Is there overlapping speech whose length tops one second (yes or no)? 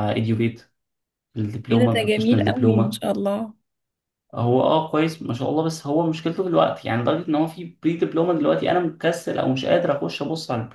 yes